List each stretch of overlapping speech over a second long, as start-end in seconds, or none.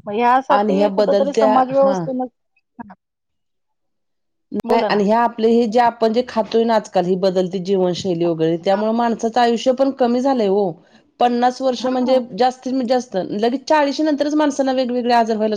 0.5-1.9